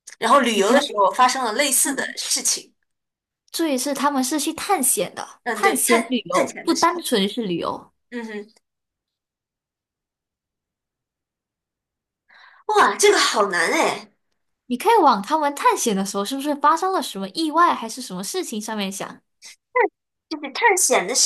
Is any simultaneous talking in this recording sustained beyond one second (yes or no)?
yes